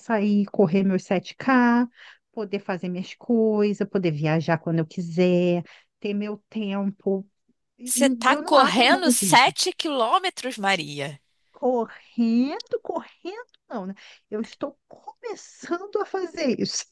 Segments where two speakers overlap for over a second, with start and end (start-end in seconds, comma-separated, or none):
7.8-9.5